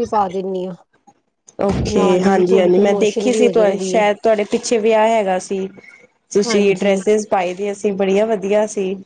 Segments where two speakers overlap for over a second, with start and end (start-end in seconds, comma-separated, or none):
1.9-4.0